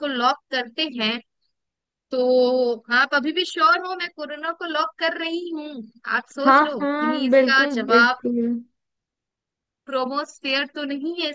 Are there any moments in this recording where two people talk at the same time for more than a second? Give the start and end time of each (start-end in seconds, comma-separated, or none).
6.5-8.2